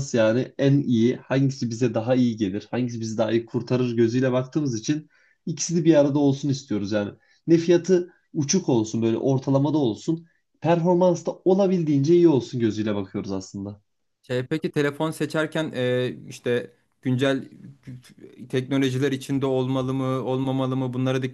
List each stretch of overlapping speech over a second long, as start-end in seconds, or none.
none